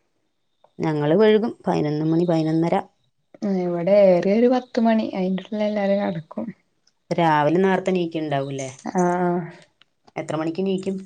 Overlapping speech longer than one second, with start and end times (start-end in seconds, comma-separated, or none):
none